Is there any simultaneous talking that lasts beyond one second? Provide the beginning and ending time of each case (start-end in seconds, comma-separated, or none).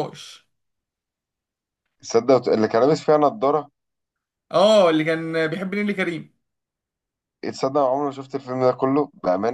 none